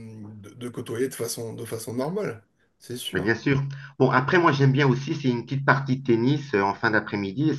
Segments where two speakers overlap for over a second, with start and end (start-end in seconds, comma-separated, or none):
none